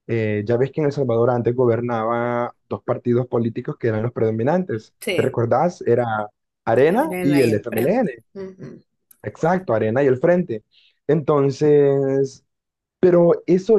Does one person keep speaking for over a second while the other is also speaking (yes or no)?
yes